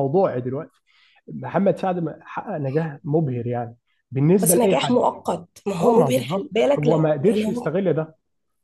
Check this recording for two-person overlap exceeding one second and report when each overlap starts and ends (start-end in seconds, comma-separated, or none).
5.8-7.7